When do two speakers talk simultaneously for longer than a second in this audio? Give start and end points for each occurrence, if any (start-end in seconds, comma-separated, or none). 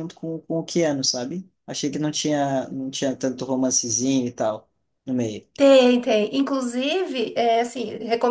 none